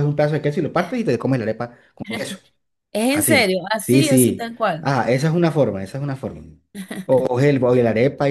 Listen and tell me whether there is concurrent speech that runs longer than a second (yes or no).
yes